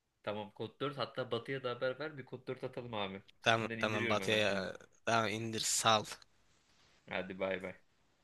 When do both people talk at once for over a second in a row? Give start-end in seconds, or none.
3.4-4.7